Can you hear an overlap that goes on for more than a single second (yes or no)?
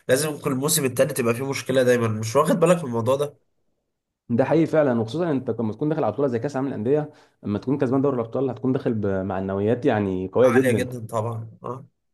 no